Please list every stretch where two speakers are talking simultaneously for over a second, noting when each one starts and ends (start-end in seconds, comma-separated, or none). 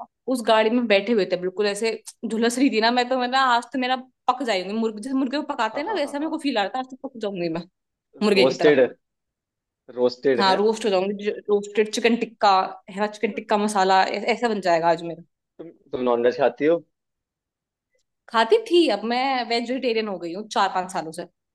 none